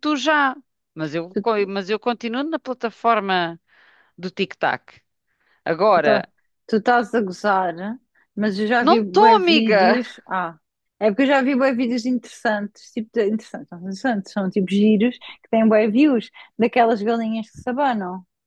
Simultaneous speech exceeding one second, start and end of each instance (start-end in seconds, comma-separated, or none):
8.8-10.0